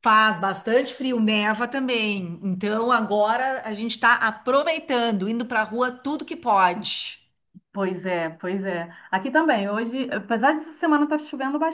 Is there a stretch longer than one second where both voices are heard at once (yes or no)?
no